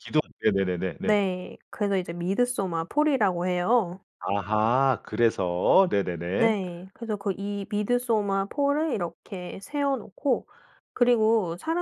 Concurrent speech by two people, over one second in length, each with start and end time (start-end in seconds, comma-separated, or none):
none